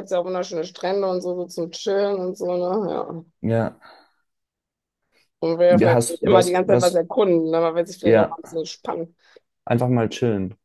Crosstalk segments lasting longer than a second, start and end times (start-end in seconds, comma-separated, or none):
5.7-7.0